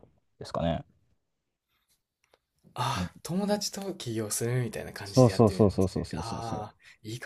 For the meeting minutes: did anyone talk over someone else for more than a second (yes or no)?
yes